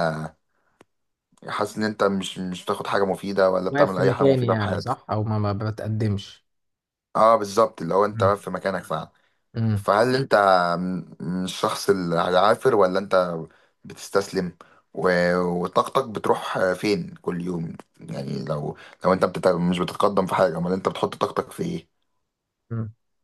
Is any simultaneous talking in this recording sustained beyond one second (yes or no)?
yes